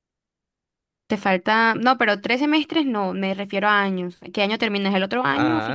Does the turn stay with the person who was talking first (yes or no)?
no